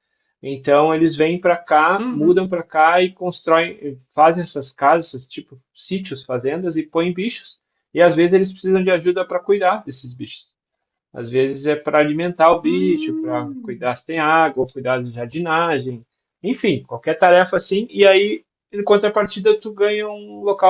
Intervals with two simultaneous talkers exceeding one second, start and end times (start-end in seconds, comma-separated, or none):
12.6-13.9